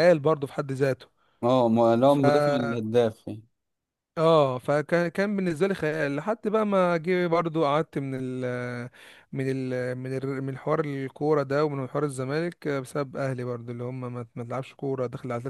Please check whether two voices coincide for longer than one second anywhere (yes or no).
no